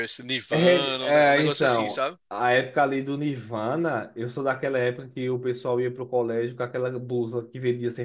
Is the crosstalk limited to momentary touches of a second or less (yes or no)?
no